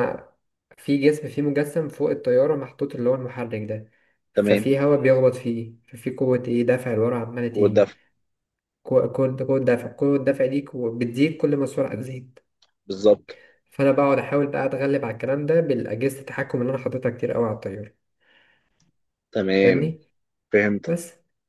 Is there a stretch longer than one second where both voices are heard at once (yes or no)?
no